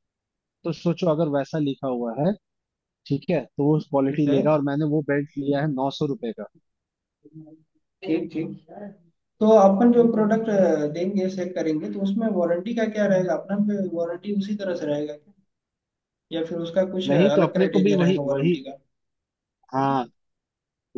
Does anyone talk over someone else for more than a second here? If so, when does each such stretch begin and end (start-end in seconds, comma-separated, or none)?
17.1-18.6